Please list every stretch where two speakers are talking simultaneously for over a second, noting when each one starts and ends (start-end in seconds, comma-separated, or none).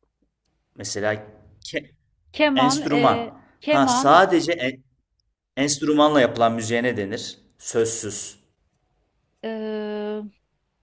2.5-4.2